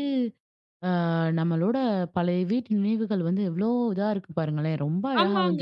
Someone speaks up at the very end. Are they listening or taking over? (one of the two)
taking over